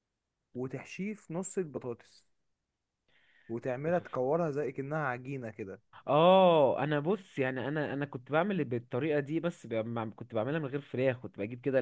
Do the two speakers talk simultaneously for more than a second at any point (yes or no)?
no